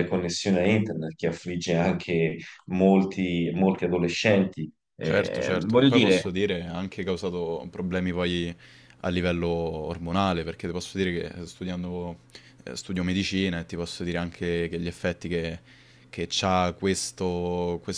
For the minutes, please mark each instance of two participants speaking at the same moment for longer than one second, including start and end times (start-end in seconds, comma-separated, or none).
5.0-6.4